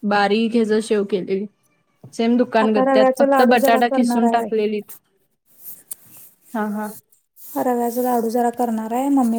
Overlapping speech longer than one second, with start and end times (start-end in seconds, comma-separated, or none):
2.6-4.3